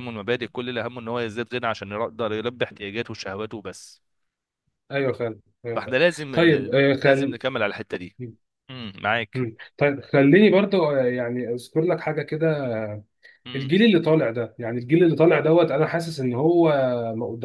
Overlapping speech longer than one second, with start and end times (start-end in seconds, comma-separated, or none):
5.7-7.4